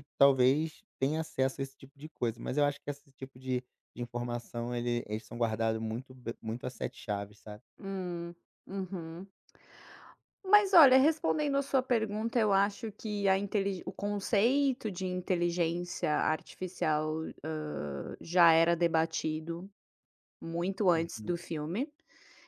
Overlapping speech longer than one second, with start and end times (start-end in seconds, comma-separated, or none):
none